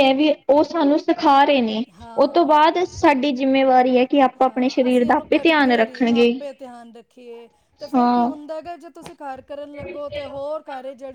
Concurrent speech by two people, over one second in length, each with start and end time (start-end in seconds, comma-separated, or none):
4.4-6.3